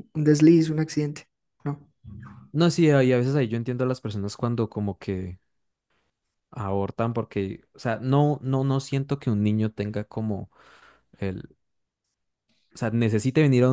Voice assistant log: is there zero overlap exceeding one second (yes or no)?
yes